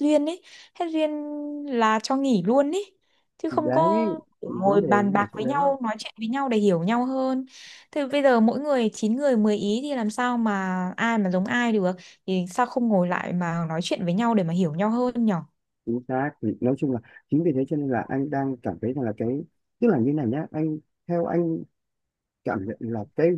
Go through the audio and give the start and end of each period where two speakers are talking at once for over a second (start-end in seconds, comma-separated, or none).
3.5-5.7